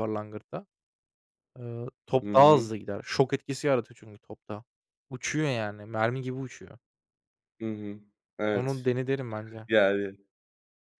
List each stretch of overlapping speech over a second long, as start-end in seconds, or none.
none